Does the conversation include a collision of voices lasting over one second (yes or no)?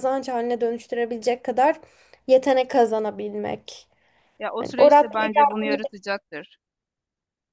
yes